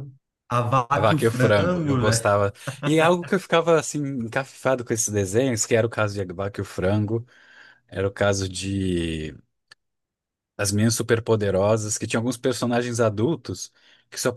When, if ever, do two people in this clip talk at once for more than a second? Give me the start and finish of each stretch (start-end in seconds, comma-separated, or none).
0.9-2.4